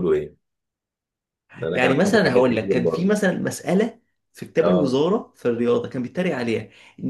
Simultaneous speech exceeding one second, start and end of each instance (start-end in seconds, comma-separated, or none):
1.7-3.2